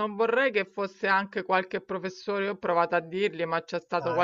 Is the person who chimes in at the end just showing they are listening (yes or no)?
yes